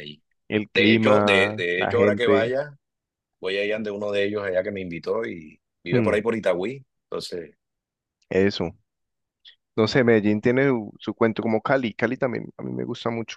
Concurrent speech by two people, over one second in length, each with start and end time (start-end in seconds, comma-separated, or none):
0.7-2.5